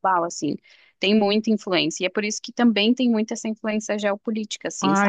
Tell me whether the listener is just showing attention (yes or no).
no